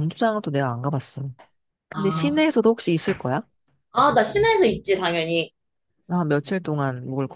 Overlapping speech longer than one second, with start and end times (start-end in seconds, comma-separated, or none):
none